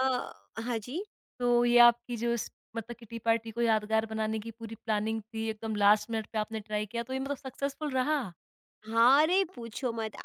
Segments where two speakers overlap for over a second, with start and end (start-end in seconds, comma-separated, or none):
none